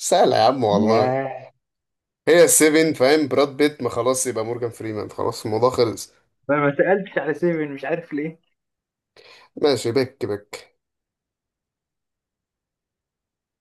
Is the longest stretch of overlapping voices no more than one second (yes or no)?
yes